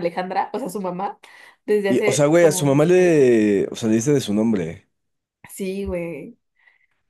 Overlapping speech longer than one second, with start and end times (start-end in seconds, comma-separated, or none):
1.9-3.3